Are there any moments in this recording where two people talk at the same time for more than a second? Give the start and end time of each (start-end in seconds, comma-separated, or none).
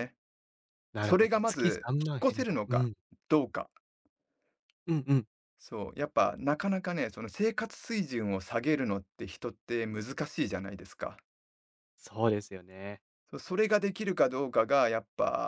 1.0-2.9